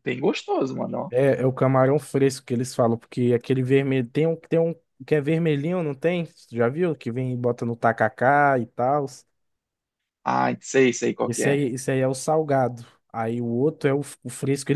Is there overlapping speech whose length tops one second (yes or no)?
no